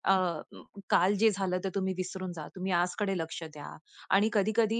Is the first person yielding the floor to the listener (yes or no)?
no